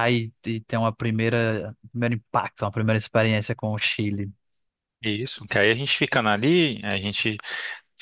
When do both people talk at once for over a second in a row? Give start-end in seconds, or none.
none